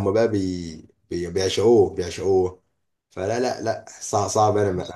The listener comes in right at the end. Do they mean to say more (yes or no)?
no